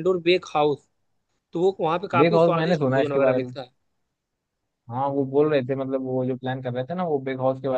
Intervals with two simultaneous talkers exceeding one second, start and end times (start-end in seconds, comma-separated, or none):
2.2-3.5